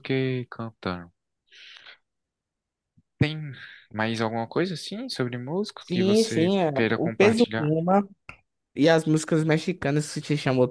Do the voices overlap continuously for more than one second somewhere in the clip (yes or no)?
yes